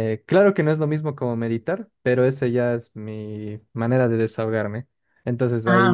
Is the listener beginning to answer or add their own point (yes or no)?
no